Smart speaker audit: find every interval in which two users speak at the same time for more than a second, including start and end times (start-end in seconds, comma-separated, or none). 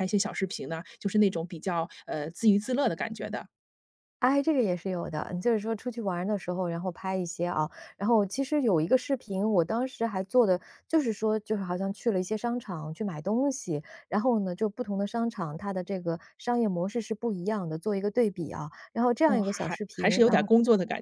19.2-20.5